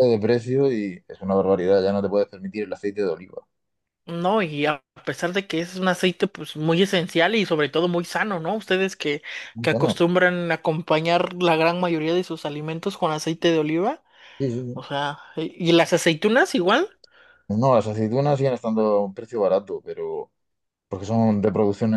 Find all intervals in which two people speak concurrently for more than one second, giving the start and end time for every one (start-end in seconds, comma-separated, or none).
none